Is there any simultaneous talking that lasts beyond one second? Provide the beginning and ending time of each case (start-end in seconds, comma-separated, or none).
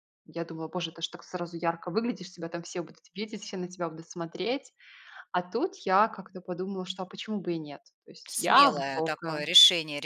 8.3-9.5